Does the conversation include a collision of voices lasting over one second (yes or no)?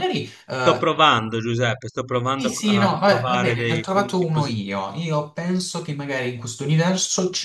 yes